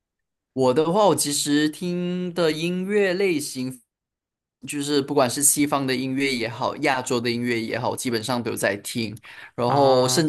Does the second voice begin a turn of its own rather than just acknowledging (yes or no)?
no